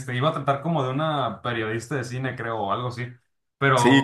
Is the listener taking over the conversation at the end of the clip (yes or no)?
yes